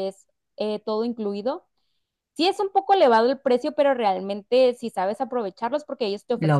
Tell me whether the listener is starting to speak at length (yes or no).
no